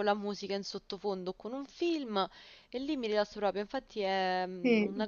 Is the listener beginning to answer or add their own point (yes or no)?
no